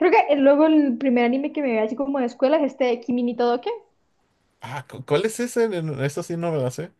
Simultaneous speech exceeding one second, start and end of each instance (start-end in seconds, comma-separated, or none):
none